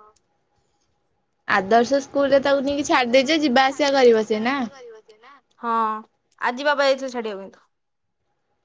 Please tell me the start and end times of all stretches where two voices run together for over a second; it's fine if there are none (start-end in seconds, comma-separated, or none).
2.3-4.5